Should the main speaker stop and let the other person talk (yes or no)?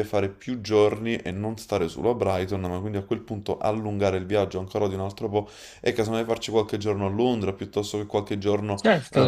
yes